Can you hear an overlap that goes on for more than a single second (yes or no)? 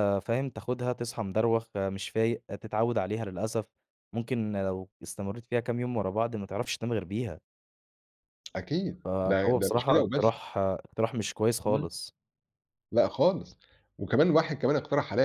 yes